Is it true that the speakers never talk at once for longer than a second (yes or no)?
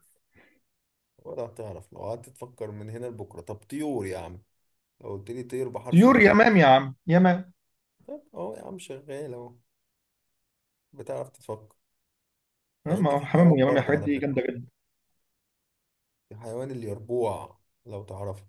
no